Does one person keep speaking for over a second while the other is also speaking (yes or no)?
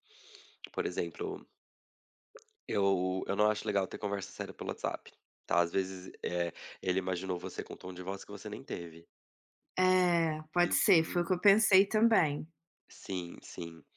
no